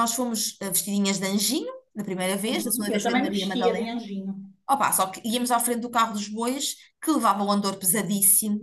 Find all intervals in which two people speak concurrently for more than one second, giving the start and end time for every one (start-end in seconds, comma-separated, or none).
2.4-4.0